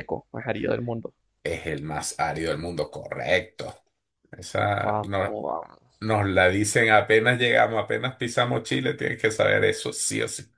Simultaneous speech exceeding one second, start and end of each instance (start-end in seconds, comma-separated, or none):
none